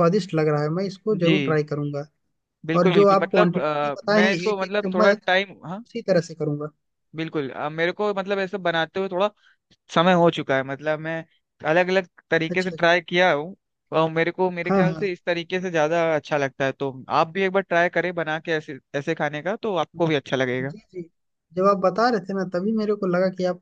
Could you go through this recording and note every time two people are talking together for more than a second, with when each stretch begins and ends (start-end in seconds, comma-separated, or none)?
2.8-5.3